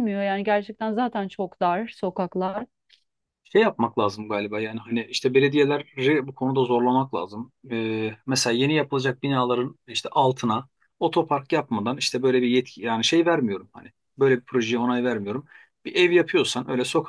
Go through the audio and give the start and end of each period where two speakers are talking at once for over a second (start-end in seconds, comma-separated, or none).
none